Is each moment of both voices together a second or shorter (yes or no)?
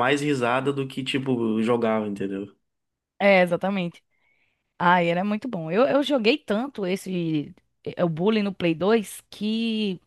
yes